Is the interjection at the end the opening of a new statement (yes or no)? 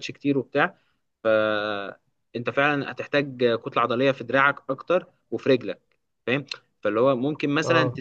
no